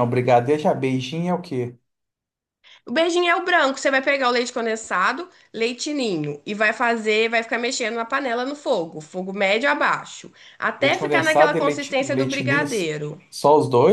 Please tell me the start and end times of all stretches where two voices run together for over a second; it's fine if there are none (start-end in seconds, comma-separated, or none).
10.8-12.7